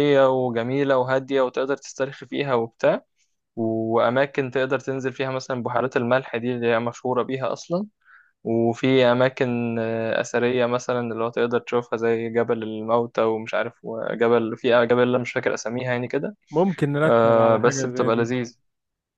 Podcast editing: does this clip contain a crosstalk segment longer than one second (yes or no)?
yes